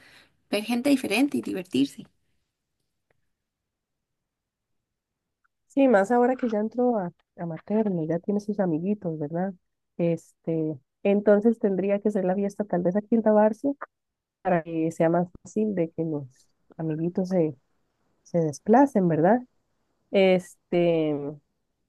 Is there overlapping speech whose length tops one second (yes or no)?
no